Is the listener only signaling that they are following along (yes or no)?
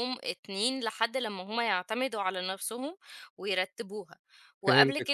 yes